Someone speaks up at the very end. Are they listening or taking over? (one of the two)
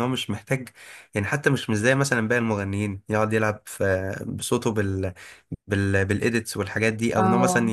listening